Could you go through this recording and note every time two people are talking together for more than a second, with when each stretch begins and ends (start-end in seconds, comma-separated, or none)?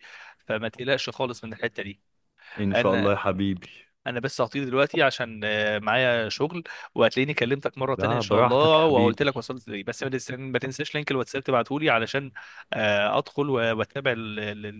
8.0-9.2